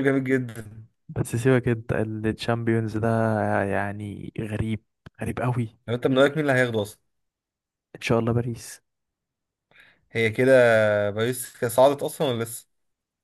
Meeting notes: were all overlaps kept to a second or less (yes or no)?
yes